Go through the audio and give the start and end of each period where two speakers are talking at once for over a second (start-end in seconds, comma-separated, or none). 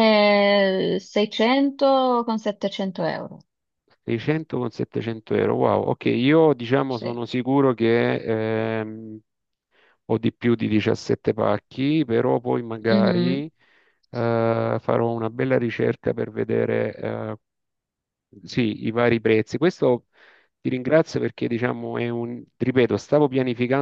none